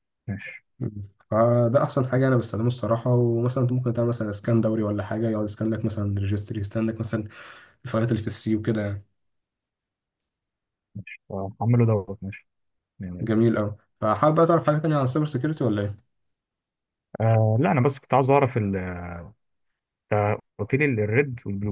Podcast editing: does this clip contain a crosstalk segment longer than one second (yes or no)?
no